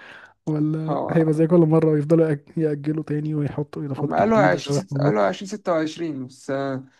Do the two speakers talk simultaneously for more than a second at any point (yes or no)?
yes